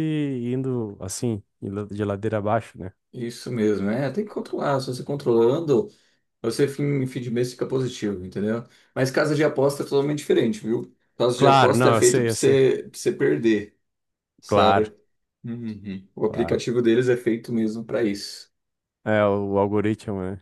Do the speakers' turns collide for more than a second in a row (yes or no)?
yes